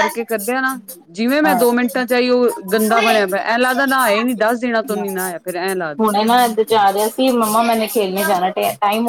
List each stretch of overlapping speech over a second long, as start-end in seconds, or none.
none